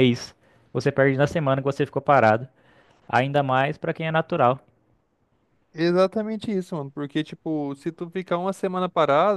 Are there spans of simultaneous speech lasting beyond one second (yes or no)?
no